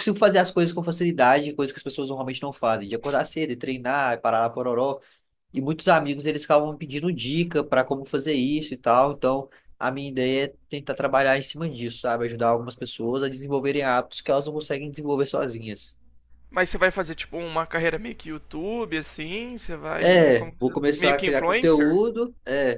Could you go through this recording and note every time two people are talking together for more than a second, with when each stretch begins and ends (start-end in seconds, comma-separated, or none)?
20.0-22.0